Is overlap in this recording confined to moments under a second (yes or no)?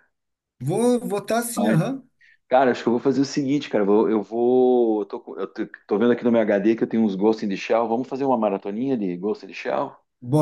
yes